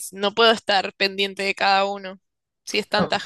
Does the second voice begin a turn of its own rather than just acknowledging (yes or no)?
yes